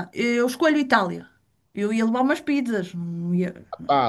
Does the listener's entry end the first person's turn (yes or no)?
yes